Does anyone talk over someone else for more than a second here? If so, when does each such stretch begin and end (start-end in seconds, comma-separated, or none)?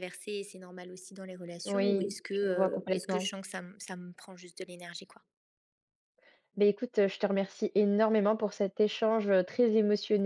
1.6-3.3